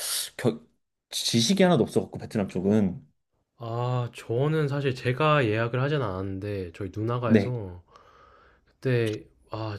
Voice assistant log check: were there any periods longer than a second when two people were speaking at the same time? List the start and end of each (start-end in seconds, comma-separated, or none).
none